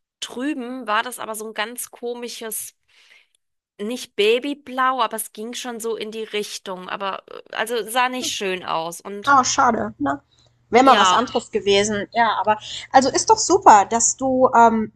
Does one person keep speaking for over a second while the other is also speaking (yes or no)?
no